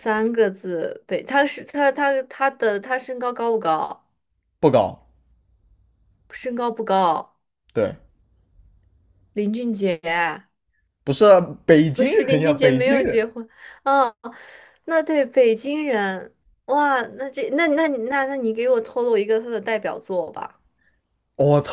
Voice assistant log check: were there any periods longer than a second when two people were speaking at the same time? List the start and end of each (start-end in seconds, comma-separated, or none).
11.9-13.2